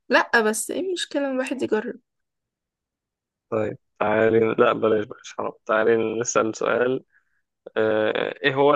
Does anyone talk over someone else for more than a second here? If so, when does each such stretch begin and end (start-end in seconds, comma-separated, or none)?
none